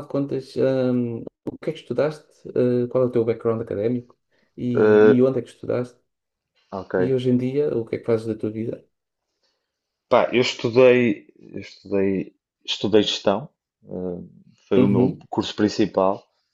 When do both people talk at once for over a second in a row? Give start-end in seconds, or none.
none